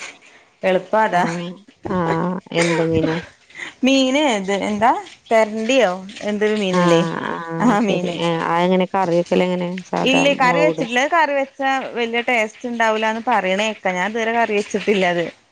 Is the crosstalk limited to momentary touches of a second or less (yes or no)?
yes